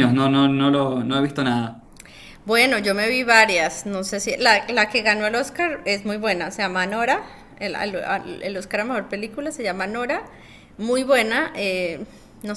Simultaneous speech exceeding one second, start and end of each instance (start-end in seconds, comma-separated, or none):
none